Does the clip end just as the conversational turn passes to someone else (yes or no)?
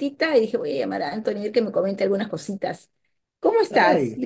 yes